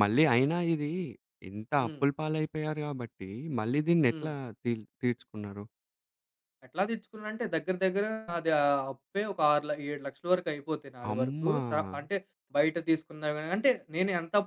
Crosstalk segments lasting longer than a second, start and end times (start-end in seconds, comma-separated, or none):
none